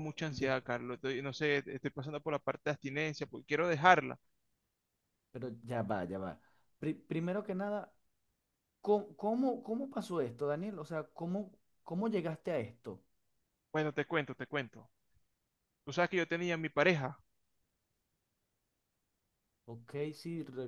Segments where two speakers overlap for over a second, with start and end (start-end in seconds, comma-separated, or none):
none